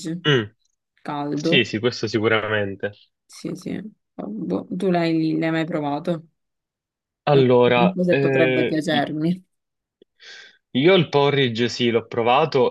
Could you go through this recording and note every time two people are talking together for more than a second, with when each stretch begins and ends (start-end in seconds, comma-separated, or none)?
7.7-9.1